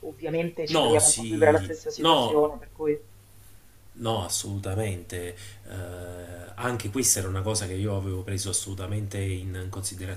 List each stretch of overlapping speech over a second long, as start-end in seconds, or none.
0.7-2.4